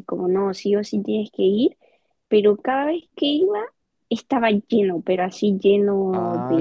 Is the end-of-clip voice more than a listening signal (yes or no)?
yes